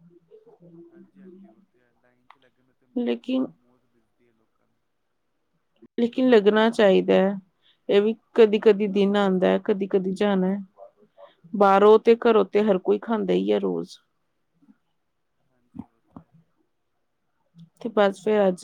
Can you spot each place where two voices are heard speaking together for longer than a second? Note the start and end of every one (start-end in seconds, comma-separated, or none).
none